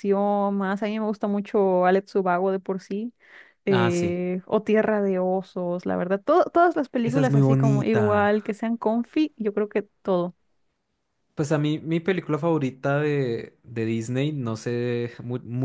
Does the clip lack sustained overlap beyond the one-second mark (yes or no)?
no